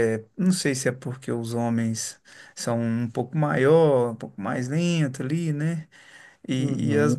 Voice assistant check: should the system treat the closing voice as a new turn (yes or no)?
no